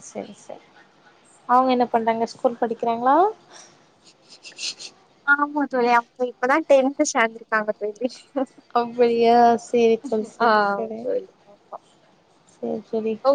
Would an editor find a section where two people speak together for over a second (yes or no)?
no